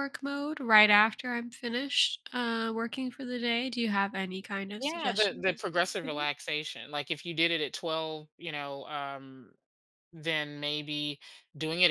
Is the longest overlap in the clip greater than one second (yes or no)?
yes